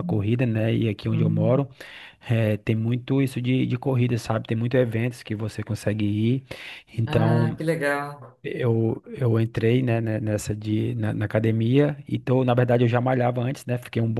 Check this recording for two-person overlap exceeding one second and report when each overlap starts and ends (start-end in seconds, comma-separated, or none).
none